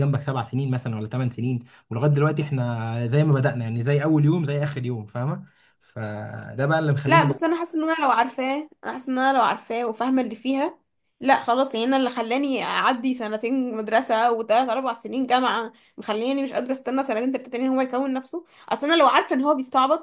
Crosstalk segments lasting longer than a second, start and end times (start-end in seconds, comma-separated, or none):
none